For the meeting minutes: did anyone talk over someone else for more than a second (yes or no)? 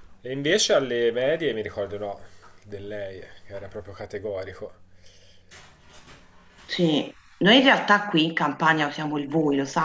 no